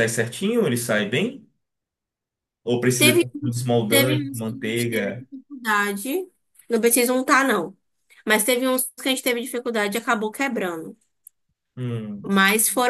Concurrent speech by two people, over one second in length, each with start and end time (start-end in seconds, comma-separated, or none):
3.9-5.3